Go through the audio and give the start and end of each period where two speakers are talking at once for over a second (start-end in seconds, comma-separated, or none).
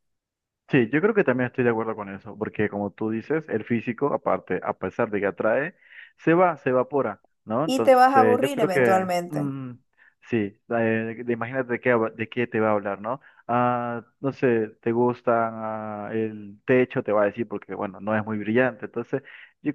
7.7-9.5